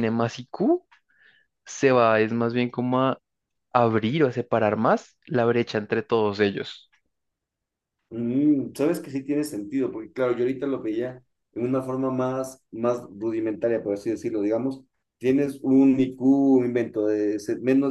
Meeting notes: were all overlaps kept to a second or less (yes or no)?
yes